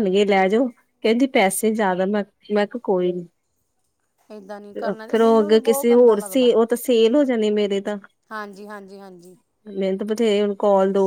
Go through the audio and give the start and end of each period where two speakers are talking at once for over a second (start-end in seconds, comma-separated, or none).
4.9-6.5